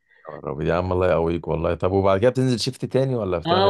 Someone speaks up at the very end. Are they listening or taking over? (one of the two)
taking over